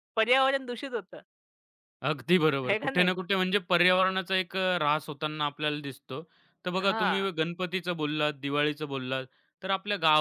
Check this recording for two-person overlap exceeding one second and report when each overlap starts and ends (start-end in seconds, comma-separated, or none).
none